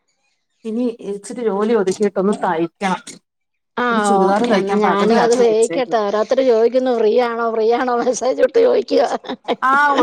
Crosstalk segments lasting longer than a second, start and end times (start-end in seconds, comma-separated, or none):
3.9-6.0